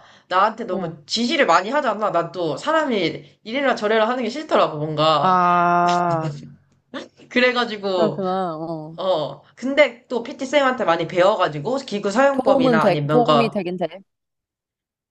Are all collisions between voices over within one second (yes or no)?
no